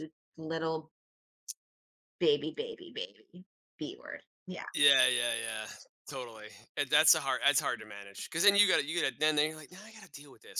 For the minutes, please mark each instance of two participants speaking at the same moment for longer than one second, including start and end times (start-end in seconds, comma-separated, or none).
none